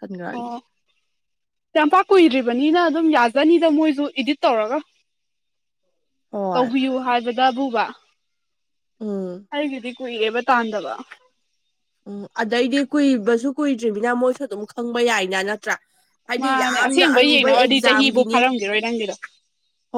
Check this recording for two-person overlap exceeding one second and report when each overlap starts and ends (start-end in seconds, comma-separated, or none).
16.4-18.4